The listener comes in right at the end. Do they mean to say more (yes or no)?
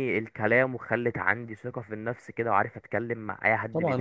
yes